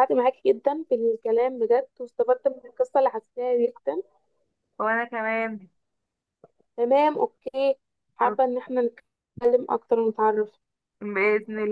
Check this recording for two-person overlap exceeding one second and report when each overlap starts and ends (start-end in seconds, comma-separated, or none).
none